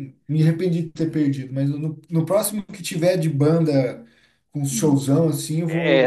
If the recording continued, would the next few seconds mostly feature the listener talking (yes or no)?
yes